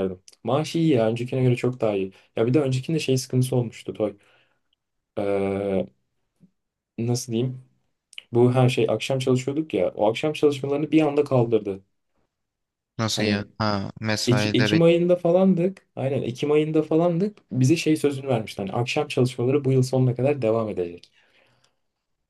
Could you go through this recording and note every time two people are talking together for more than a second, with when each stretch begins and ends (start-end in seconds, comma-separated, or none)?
none